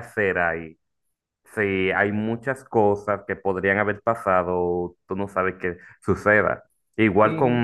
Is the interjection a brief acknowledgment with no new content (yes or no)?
yes